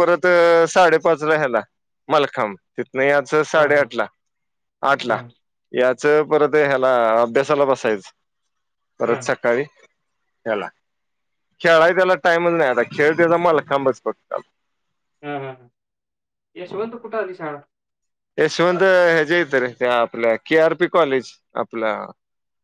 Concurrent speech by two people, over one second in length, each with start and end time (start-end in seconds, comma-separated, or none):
none